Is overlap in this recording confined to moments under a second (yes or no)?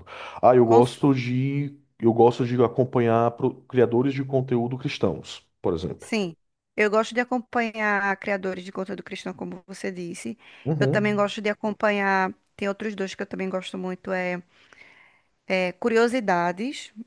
yes